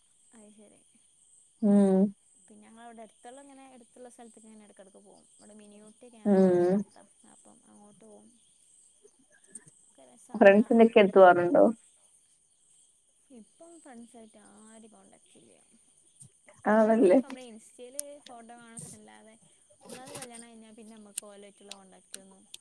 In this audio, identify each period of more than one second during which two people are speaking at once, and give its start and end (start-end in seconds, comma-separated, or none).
none